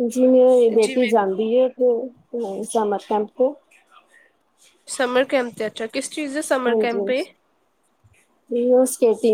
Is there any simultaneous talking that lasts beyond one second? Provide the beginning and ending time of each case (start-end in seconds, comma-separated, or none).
none